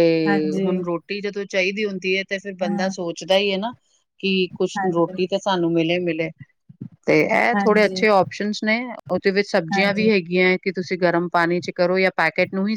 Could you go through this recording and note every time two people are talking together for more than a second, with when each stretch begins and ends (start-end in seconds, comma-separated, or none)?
none